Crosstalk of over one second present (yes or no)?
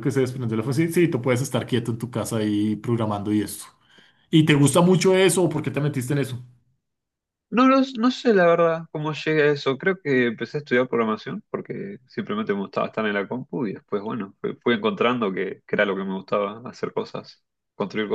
no